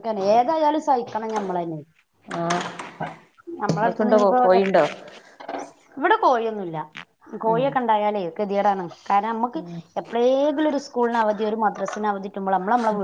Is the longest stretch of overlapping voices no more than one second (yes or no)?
yes